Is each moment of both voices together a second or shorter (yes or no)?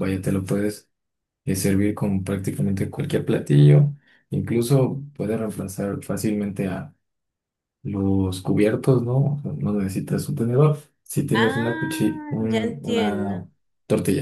no